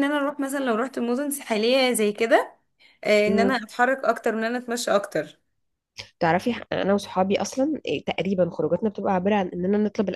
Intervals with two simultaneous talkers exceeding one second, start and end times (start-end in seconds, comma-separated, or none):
none